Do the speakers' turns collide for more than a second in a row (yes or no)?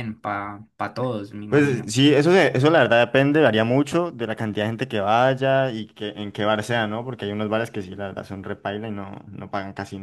no